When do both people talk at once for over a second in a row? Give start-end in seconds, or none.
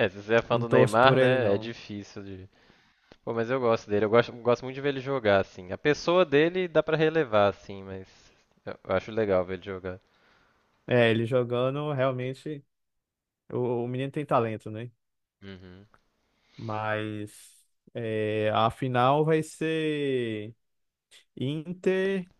0.5-1.7